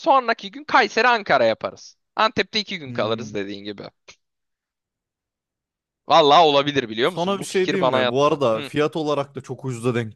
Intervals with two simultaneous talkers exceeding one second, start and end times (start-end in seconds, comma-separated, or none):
7.0-8.7